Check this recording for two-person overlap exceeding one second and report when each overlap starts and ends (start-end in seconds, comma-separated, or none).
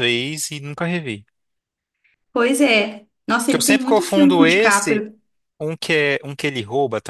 3.5-5.1